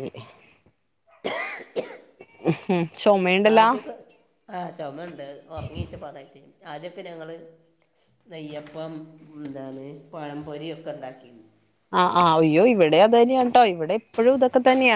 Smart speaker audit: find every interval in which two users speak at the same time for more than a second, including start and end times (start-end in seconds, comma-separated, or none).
none